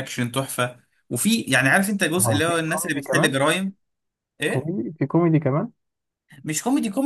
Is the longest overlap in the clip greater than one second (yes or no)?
yes